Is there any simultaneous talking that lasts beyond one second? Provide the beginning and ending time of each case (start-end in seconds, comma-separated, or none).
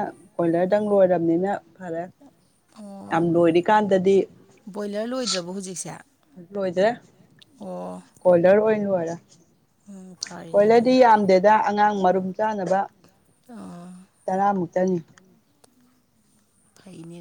none